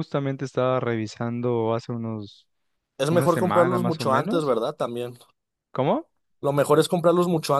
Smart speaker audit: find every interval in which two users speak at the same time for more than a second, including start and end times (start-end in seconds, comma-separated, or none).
3.1-4.5